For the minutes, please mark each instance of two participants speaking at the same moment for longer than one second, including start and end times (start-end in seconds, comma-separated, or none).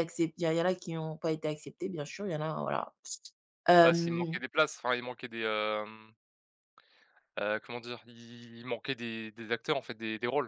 none